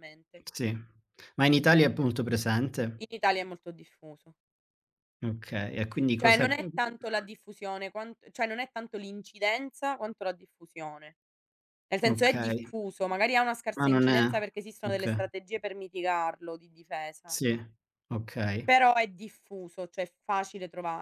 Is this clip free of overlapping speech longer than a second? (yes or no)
yes